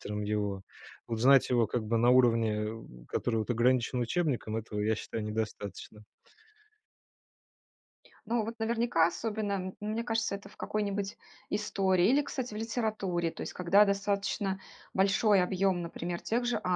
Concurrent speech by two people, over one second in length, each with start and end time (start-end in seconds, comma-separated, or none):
none